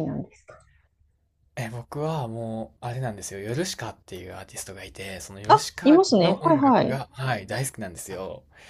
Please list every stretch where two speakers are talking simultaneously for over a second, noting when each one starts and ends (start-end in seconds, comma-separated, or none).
5.5-7.0